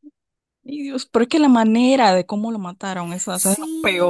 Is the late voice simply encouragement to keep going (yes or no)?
no